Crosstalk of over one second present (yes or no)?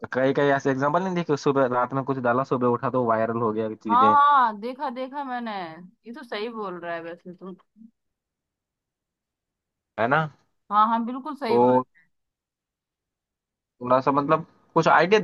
no